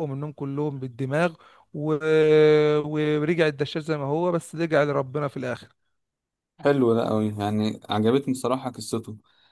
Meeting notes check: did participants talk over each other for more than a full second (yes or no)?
no